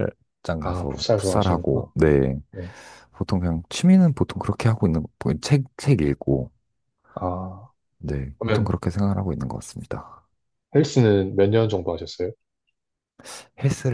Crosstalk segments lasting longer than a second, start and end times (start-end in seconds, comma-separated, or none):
0.6-1.9